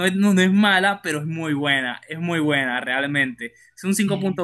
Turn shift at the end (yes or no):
no